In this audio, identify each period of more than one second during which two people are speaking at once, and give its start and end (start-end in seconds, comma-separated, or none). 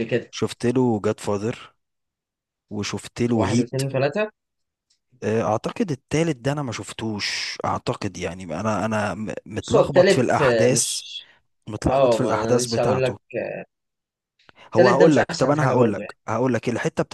9.6-11.0, 11.9-13.2, 14.7-16.1